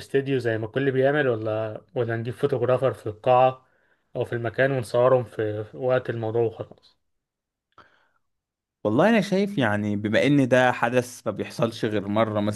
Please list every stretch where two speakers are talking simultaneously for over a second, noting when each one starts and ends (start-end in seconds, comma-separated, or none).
none